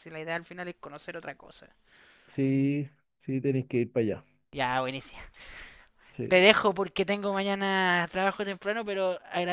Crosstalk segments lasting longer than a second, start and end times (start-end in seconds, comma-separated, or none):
none